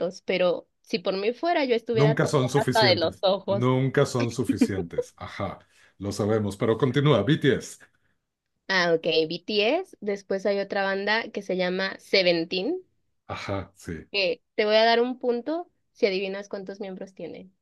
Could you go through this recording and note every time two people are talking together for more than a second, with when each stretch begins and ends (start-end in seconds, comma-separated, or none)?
1.9-3.7